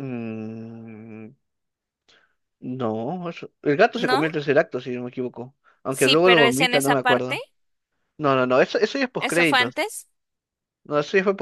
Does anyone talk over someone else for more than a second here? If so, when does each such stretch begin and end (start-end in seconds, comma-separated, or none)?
5.9-7.4